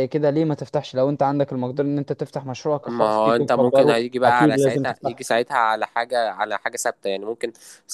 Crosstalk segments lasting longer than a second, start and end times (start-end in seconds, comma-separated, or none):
2.9-5.3